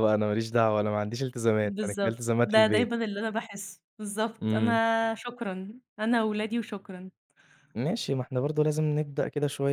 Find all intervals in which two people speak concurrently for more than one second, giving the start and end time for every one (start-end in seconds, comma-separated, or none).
1.6-2.9